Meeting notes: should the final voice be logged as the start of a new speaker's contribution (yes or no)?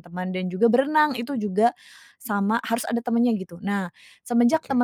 no